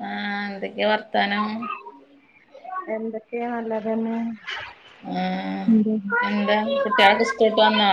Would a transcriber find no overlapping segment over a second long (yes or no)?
yes